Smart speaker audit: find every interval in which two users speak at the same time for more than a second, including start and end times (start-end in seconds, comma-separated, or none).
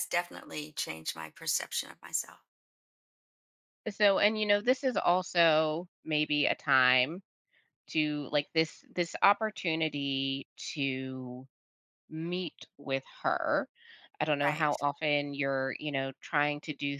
none